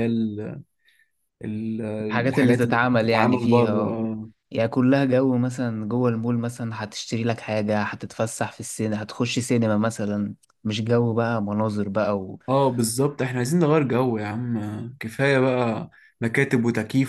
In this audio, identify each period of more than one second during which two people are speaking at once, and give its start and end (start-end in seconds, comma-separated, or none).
2.3-4.0